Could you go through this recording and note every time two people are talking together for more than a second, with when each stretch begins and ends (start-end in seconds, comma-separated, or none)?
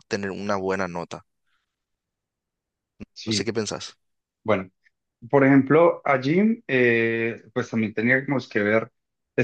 none